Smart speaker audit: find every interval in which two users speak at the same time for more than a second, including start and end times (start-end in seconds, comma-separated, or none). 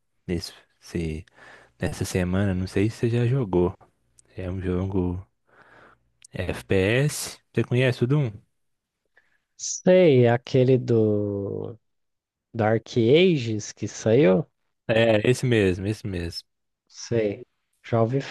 none